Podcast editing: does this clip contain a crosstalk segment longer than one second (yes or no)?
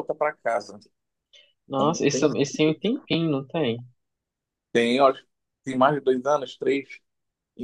no